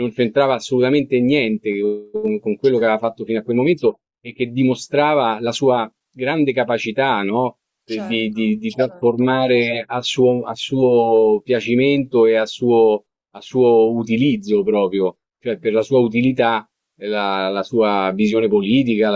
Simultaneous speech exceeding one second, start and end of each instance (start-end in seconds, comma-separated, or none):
7.9-9.2